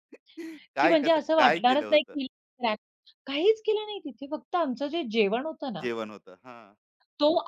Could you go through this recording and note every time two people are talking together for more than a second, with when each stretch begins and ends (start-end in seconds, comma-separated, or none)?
0.8-2.1